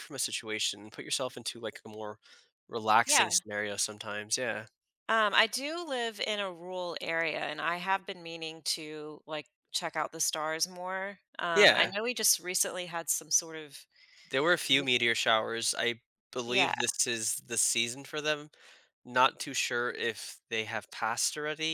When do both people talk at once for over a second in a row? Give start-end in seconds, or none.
none